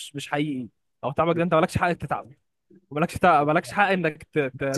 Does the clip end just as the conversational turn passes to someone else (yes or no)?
yes